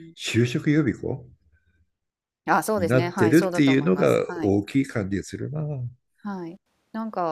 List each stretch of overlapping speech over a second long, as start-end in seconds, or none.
2.8-4.5